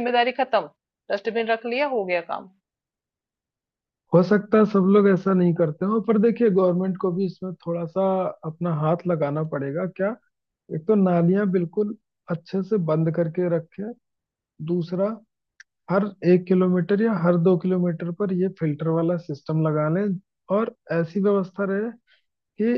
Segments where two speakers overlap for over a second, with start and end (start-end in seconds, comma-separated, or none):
none